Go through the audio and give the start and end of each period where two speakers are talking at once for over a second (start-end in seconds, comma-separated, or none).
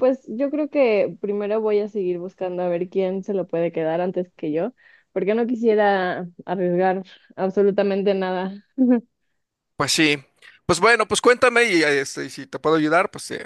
none